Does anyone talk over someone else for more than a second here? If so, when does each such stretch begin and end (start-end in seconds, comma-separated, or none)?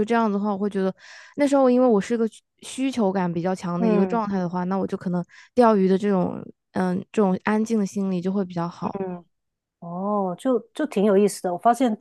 none